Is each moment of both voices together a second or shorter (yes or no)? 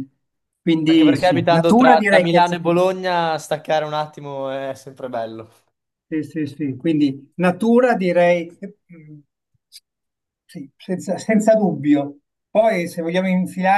no